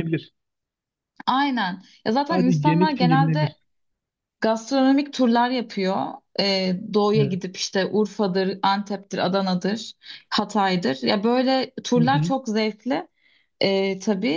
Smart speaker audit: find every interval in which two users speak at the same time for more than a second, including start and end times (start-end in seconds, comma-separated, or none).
2.3-3.5